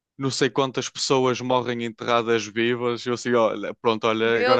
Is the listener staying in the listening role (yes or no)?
yes